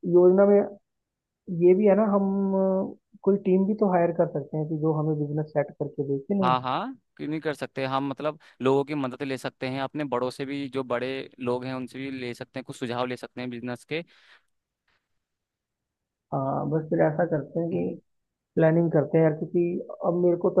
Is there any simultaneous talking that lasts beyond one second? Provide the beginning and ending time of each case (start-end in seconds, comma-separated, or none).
none